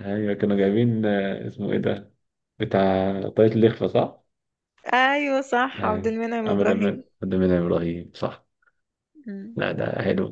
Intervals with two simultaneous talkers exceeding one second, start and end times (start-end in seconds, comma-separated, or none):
5.7-7.0